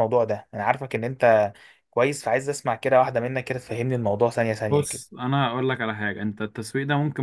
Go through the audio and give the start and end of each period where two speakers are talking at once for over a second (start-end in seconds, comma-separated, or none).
none